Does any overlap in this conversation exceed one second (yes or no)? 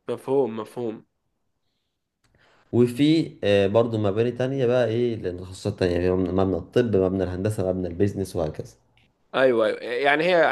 no